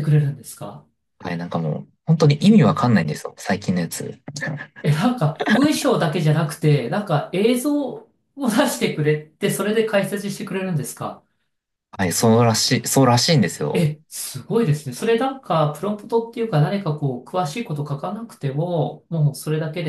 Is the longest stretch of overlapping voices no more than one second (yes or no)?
yes